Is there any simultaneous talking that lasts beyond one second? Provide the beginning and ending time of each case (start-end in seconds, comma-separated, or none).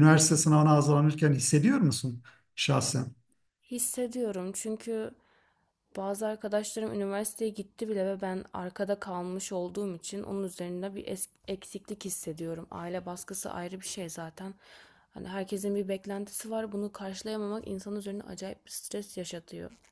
none